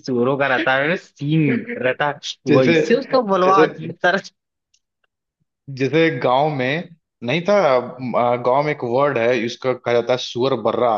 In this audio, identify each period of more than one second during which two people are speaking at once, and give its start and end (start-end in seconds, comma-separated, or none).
none